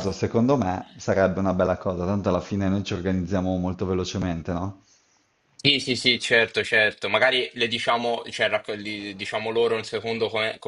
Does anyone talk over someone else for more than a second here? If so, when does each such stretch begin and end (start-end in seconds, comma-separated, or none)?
none